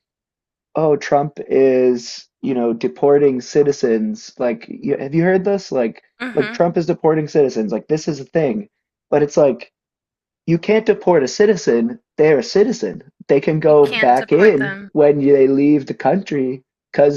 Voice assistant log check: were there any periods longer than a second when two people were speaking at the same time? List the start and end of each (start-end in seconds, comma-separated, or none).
13.6-14.9